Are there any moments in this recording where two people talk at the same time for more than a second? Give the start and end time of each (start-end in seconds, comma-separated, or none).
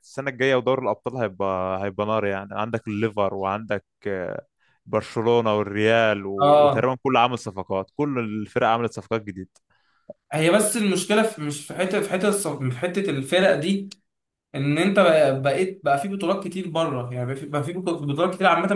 none